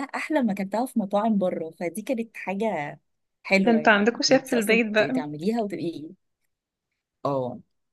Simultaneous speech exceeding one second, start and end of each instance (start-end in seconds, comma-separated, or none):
3.6-5.2